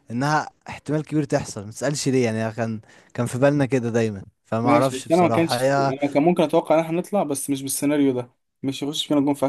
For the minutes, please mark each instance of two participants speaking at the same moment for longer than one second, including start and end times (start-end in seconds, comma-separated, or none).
4.6-5.9